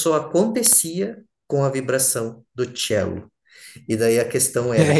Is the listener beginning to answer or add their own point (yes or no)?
no